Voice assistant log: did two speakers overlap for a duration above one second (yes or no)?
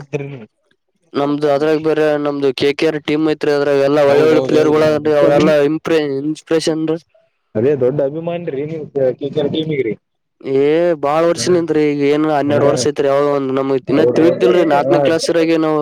yes